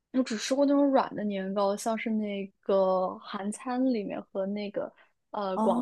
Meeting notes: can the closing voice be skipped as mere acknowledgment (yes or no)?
yes